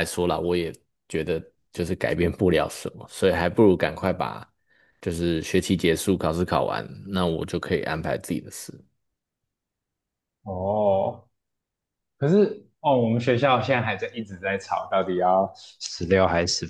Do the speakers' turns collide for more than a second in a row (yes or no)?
no